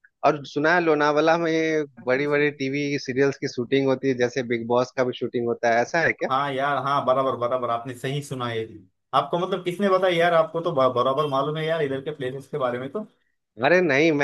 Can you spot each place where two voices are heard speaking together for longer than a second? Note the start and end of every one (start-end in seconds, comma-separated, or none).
none